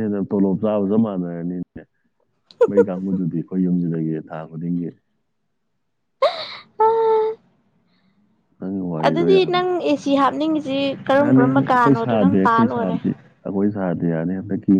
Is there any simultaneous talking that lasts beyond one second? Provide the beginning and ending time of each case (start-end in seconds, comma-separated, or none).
11.2-13.0